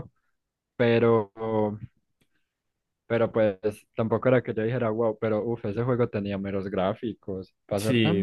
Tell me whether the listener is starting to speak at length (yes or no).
yes